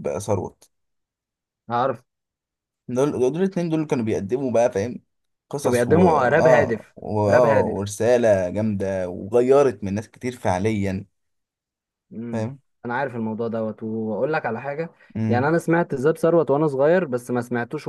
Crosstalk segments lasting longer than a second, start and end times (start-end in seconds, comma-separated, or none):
5.6-7.9